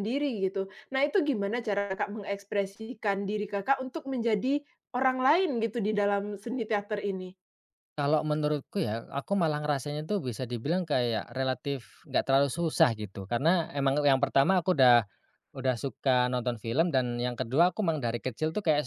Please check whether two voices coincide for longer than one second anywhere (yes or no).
no